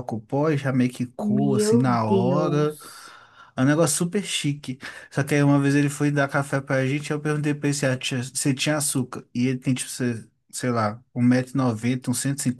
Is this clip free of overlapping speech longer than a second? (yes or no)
no